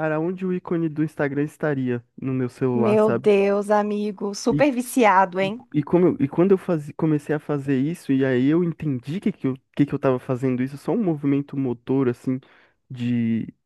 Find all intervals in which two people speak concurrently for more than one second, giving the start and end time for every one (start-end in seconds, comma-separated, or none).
none